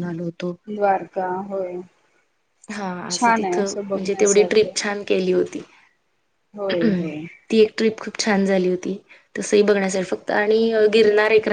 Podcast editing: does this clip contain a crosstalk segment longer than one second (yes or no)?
yes